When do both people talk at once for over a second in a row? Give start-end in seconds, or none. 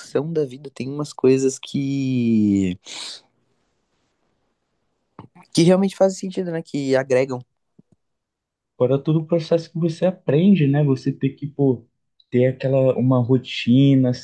none